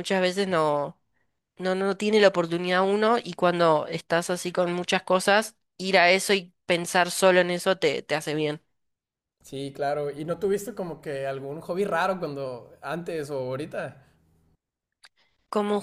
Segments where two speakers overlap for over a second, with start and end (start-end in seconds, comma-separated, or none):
none